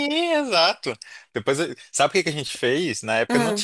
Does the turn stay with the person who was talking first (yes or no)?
yes